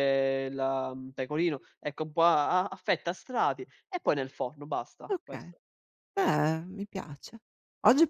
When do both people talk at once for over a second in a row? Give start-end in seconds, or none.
none